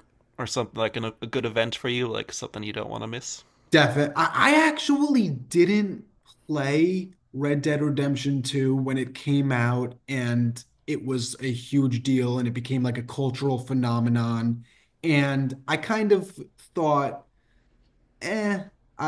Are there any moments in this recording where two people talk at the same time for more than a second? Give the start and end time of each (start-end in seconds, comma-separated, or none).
none